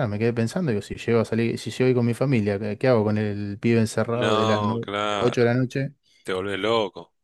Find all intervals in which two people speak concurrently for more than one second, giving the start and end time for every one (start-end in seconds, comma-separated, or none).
4.1-5.5